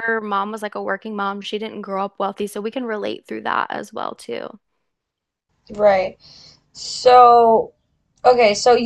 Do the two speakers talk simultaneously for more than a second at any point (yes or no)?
no